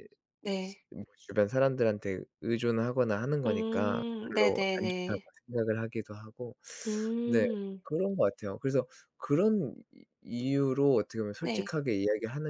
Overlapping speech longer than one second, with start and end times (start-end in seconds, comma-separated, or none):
3.5-5.3